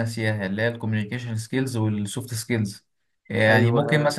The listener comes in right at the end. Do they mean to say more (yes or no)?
no